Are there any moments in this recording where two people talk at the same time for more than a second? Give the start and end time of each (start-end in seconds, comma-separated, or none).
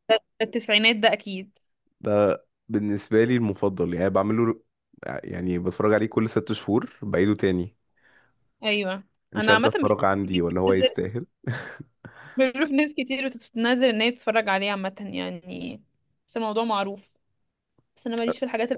9.3-10.9